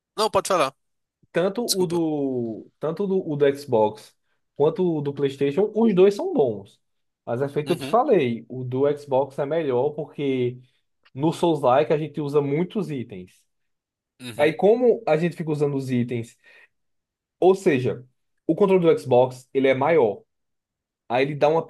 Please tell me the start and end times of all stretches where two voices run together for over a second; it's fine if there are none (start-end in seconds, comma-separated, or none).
none